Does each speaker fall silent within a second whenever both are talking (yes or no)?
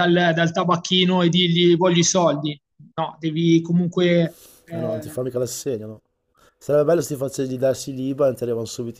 yes